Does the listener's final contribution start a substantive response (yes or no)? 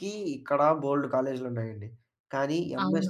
no